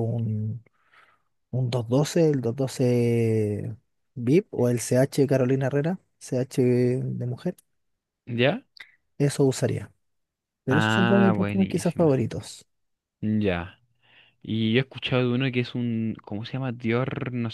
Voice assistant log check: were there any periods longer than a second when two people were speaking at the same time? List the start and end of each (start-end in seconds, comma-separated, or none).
10.7-12.1